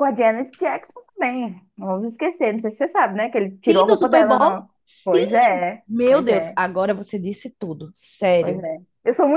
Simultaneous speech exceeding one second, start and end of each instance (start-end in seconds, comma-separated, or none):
3.6-6.6